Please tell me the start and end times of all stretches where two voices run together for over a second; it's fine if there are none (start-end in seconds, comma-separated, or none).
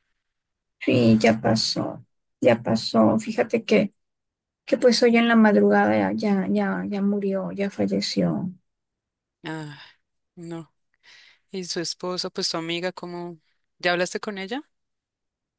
none